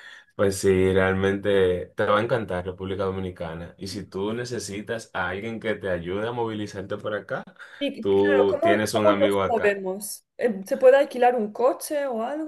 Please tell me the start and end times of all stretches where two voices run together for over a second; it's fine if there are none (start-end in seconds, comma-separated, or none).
8.0-9.8